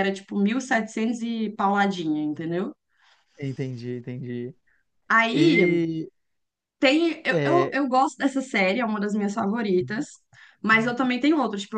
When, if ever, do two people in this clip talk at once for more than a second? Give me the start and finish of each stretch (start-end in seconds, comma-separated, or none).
none